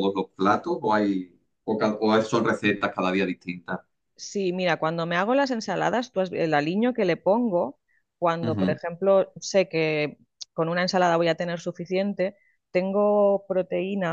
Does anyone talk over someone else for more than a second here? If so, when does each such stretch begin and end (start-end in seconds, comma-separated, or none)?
none